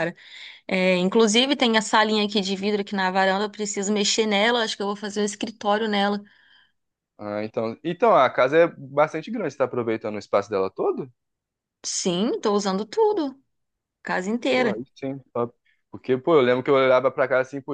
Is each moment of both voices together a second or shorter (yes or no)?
yes